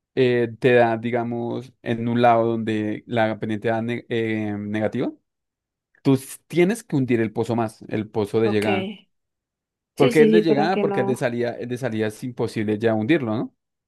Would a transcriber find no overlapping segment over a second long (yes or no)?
no